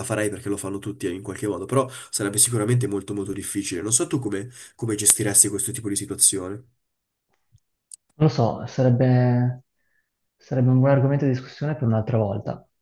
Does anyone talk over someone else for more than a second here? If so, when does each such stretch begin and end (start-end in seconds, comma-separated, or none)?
none